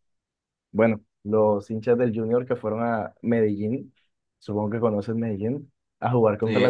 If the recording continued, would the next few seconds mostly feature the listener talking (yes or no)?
no